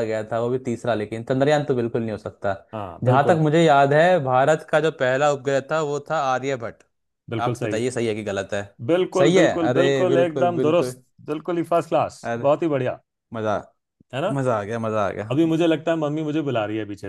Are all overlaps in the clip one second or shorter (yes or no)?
no